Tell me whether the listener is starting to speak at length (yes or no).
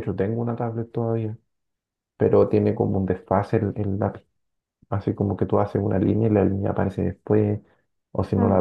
no